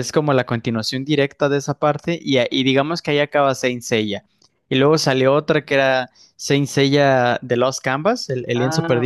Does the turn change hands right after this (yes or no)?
yes